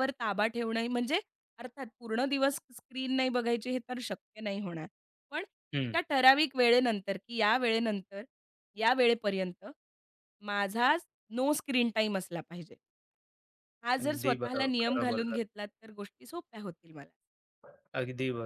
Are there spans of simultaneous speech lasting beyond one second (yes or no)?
yes